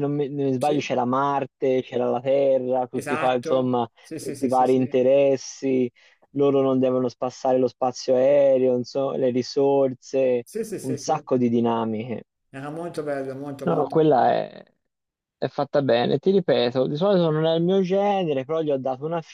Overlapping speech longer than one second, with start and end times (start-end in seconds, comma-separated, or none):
2.9-5.0